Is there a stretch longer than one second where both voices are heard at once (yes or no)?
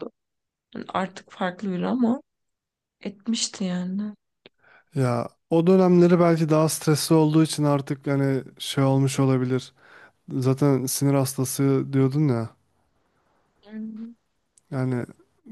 no